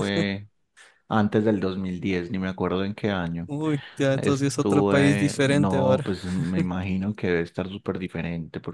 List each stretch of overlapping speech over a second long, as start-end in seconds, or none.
4.1-6.2